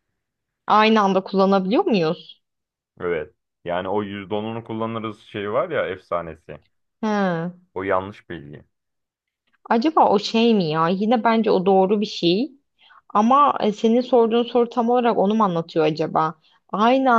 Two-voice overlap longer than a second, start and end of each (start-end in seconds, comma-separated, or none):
none